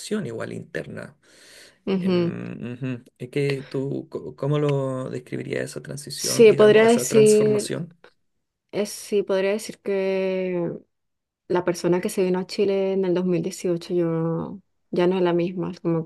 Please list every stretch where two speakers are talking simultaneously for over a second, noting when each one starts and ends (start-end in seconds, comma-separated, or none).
6.2-7.7